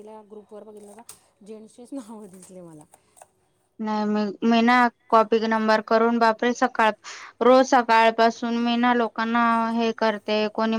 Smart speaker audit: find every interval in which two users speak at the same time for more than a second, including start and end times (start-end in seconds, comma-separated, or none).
none